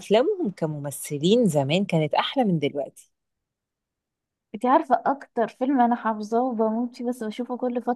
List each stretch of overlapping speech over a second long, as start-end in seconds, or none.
none